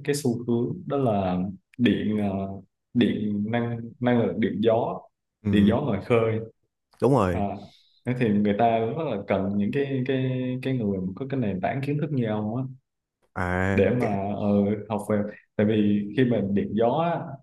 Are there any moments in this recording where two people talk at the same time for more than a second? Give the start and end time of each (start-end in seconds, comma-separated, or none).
none